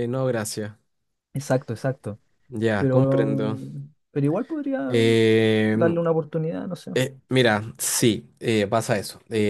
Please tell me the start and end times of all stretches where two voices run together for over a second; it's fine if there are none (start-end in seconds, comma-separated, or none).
none